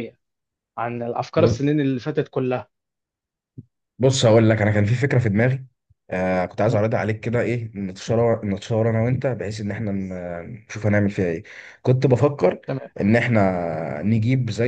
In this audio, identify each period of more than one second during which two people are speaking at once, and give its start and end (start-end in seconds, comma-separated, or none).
none